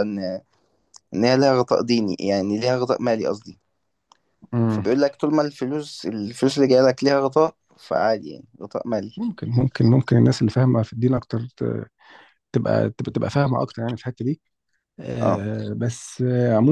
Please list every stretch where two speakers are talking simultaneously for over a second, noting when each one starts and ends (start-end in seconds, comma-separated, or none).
none